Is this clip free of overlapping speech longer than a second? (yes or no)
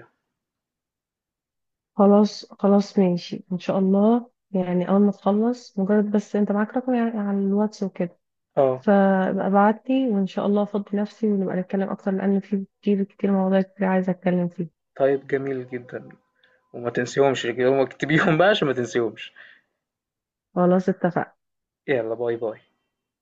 yes